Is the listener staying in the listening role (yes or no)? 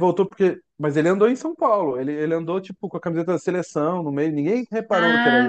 no